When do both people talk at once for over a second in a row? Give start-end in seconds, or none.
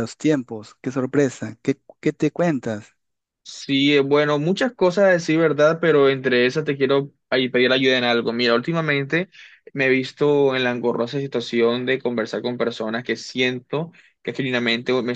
none